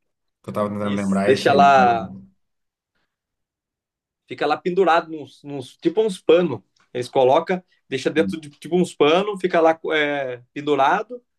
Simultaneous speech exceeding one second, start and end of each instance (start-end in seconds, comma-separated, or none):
0.8-2.1